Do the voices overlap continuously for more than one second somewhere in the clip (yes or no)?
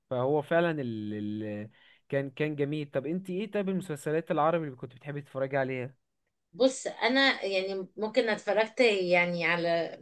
no